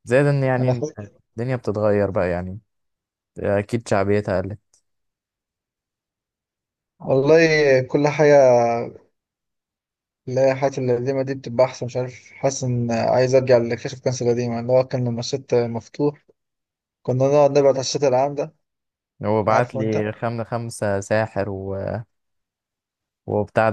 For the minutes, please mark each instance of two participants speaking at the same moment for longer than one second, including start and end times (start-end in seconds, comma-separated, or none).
none